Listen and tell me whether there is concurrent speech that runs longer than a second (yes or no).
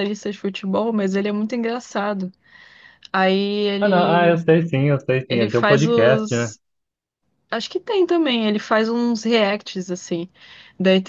yes